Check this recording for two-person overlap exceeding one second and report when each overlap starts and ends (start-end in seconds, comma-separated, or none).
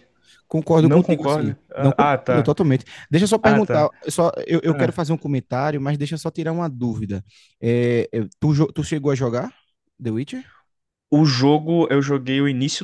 0.8-2.5